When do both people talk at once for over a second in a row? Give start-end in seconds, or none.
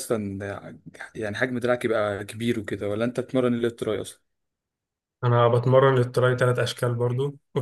none